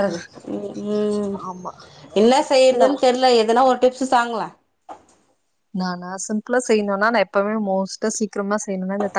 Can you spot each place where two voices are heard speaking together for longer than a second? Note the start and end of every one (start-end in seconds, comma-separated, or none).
none